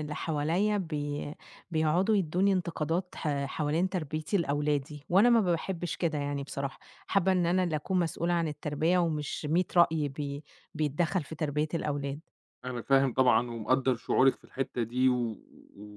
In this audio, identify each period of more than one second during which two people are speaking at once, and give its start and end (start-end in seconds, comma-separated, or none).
none